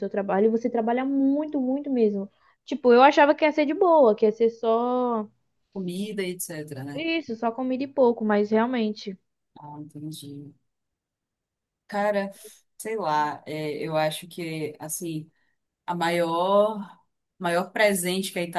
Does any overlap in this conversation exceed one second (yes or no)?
no